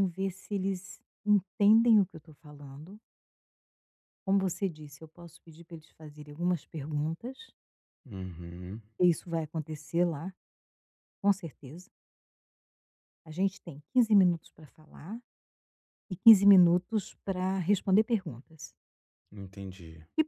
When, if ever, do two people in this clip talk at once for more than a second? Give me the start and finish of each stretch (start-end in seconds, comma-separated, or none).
none